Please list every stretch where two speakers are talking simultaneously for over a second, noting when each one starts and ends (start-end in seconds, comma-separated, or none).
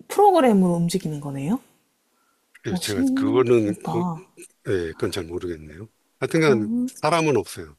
2.7-4.0